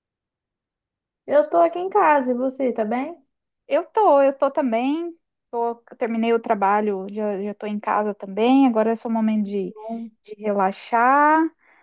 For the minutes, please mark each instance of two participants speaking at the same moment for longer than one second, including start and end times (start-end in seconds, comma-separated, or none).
none